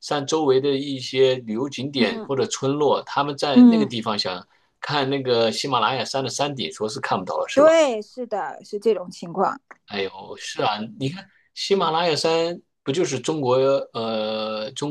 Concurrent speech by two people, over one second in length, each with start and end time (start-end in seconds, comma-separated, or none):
none